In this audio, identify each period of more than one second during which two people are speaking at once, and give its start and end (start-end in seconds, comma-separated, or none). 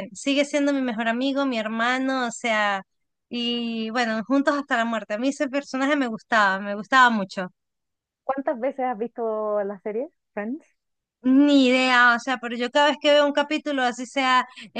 none